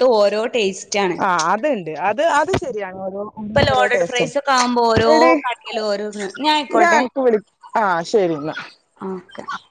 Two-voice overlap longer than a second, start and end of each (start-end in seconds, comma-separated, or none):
3.7-5.1